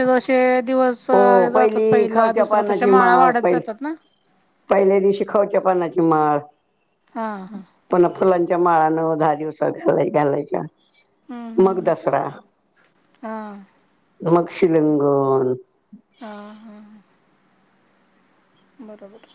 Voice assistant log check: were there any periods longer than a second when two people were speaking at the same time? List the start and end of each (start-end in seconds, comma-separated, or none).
1.6-3.6